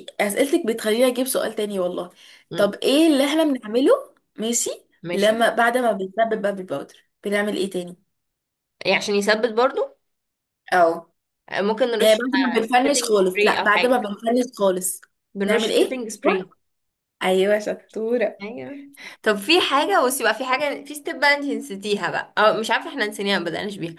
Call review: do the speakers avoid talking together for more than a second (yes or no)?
no